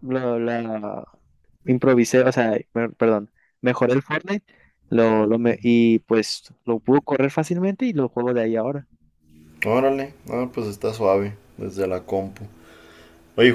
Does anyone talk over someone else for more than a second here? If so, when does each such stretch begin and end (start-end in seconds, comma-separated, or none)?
none